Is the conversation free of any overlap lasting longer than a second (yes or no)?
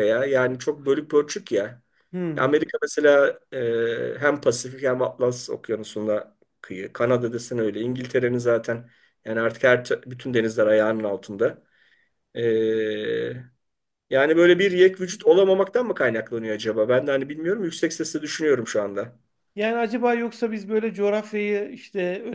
yes